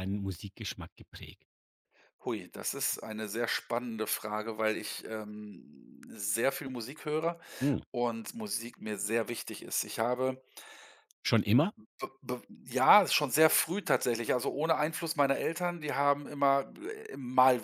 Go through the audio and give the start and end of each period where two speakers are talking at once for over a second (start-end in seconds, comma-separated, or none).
none